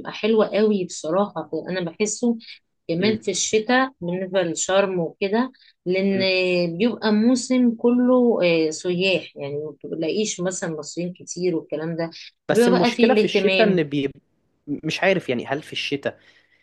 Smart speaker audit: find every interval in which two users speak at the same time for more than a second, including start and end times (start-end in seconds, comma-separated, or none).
12.5-13.8